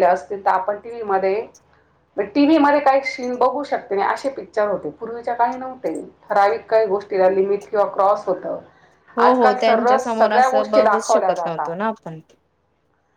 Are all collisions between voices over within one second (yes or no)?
no